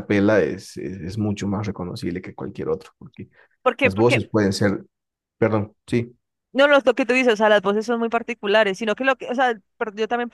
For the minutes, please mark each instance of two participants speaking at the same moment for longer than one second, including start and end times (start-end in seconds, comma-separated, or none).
none